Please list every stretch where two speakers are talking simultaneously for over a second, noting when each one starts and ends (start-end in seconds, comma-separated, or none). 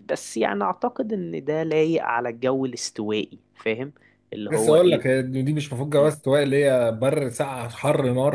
none